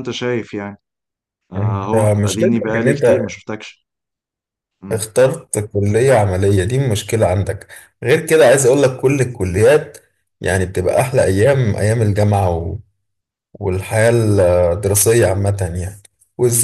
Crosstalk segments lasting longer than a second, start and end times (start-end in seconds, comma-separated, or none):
1.6-3.3